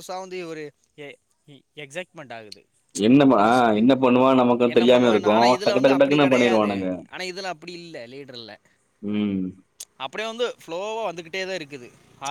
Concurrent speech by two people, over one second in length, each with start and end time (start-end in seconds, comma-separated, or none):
4.7-6.7